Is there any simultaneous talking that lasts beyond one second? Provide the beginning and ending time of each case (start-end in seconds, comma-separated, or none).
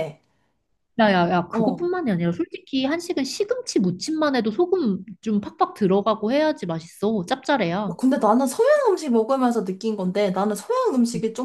none